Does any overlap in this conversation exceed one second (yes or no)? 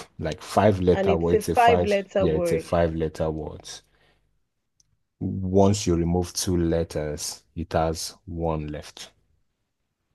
yes